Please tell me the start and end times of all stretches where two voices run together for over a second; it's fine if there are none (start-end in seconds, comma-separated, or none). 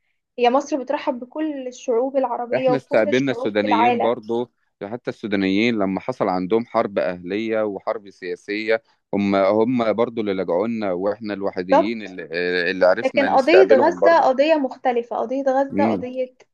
2.6-4.2, 13.0-14.3